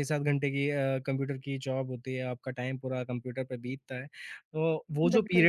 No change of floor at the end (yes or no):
yes